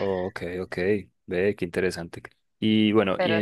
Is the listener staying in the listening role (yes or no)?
yes